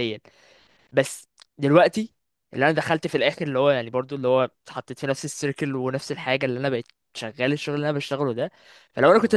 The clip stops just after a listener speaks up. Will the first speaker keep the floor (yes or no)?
yes